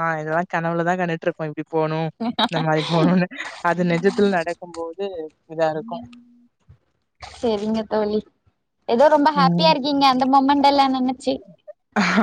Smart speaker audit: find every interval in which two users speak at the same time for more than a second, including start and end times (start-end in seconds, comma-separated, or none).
none